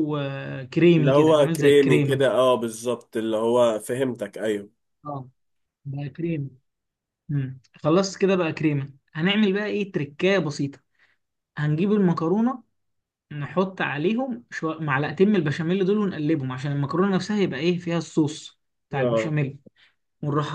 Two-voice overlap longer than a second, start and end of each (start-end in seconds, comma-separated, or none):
1.0-2.3